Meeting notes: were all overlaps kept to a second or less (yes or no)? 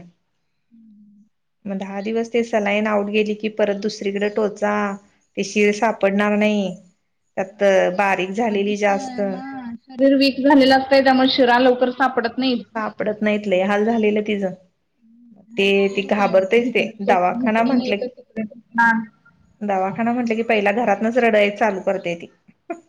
no